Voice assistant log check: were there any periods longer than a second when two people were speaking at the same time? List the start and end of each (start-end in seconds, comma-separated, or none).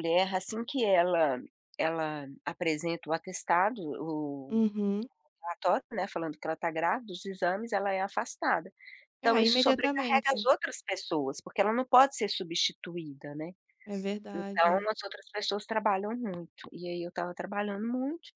9.2-10.5